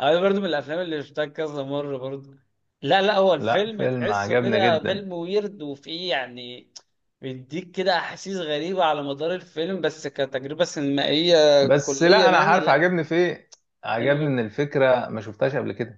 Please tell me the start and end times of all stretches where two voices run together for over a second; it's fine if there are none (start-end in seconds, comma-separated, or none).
3.4-5.1, 11.6-12.8